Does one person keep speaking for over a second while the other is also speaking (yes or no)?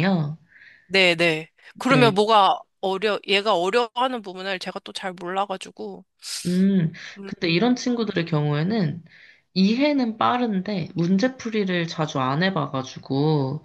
no